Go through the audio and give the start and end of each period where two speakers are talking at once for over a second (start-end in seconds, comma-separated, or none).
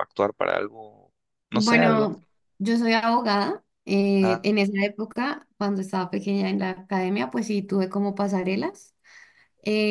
none